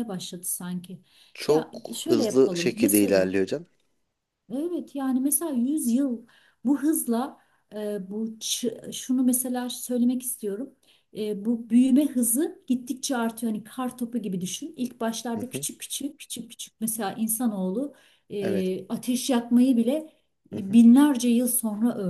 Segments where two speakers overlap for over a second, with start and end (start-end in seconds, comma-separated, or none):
1.5-3.3